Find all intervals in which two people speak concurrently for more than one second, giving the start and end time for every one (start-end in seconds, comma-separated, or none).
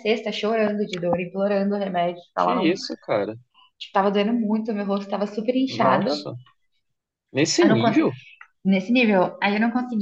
none